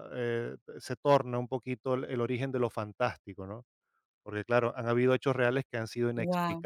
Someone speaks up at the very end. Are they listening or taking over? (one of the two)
listening